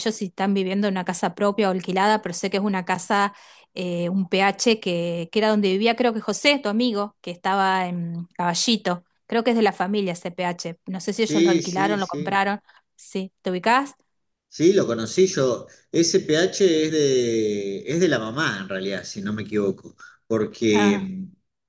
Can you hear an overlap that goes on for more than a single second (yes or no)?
yes